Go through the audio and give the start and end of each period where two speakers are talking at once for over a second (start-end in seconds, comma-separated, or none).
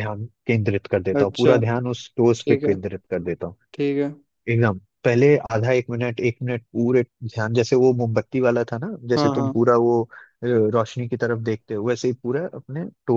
none